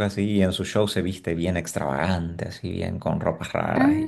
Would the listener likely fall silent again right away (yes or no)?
no